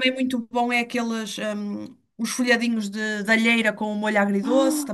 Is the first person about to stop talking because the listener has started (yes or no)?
yes